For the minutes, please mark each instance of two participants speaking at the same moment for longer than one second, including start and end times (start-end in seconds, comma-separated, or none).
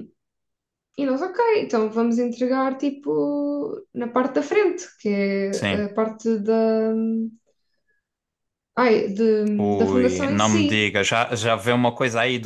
9.6-10.9